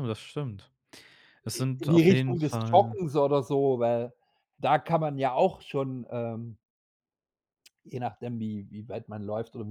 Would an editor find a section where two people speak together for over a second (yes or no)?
yes